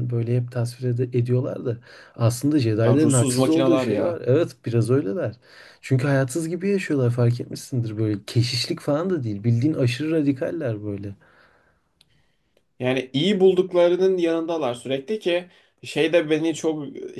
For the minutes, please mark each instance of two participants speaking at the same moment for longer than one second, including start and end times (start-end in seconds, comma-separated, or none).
2.8-4.2